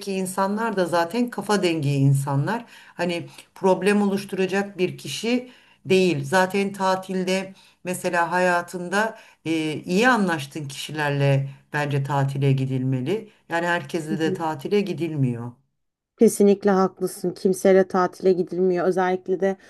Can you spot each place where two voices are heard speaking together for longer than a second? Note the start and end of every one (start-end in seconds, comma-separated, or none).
none